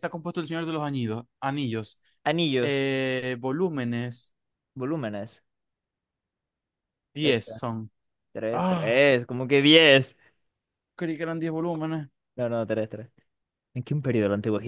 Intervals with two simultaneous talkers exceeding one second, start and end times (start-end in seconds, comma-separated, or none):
none